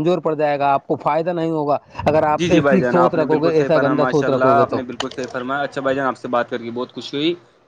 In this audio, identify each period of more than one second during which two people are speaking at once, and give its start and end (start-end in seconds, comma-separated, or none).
2.4-4.8